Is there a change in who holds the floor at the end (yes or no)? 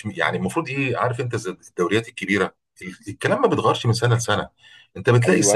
no